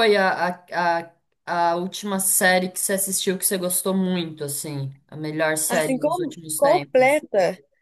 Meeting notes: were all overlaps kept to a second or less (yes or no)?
no